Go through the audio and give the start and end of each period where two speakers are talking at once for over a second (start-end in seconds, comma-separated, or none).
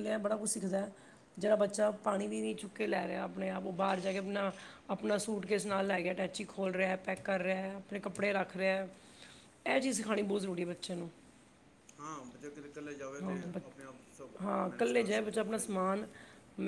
13.2-15.8